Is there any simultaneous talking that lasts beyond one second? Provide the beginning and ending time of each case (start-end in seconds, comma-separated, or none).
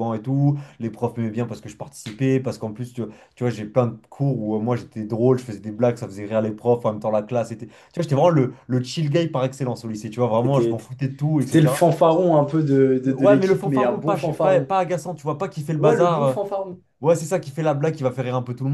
13.0-14.7